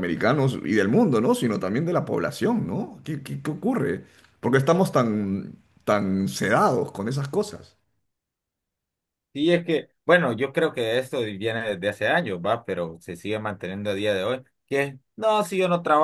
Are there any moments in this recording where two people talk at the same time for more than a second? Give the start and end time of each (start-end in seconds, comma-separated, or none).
none